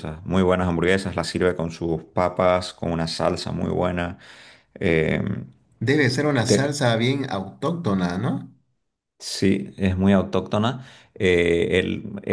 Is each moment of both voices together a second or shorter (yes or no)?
yes